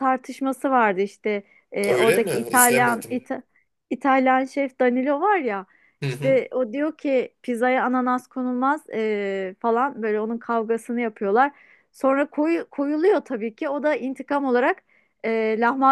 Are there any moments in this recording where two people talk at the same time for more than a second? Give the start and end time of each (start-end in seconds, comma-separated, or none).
1.9-3.2